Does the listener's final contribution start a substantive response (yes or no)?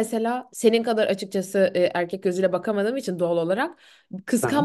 no